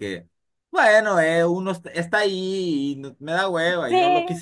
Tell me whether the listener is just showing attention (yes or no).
yes